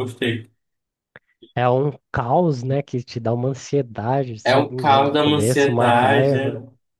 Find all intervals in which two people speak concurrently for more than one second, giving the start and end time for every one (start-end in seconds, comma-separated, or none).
4.4-6.3